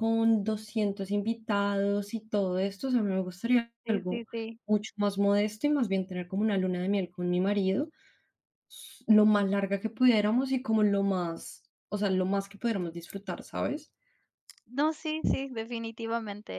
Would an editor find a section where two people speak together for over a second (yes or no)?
no